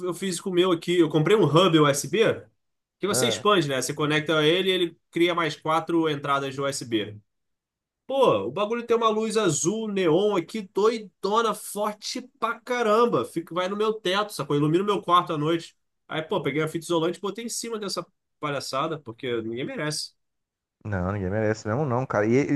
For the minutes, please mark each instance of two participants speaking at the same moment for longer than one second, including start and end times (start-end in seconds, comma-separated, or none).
none